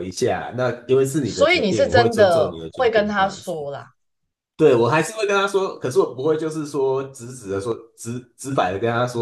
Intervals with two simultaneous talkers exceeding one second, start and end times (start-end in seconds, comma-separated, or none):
1.2-3.6